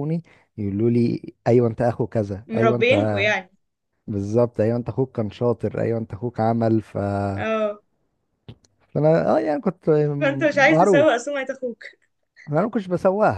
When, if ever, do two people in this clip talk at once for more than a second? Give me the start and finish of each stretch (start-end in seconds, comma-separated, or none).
none